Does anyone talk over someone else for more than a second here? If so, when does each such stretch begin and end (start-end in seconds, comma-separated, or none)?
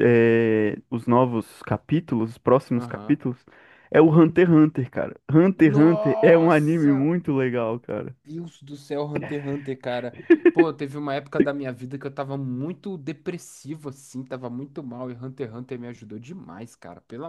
5.7-7.1